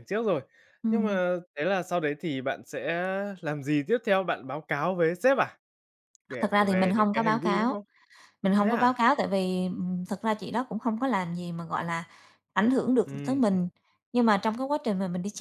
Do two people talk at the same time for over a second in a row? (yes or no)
yes